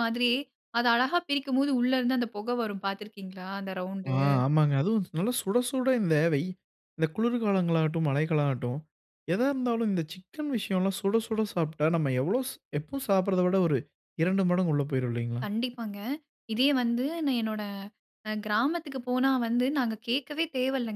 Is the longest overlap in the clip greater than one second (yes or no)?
no